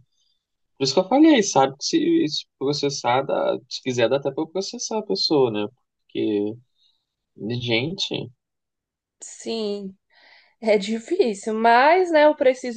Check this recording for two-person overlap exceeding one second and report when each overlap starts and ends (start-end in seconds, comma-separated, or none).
none